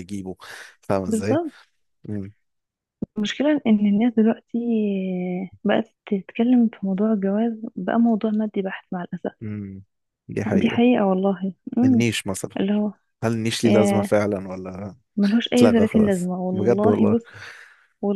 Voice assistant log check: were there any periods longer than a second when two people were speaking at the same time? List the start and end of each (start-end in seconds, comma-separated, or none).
15.5-17.2